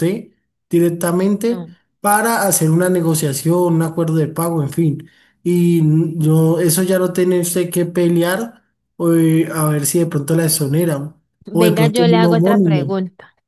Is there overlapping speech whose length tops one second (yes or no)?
yes